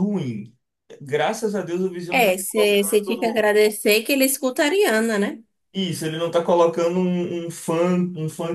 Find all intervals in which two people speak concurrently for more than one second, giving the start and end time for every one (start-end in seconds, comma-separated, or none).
2.1-3.5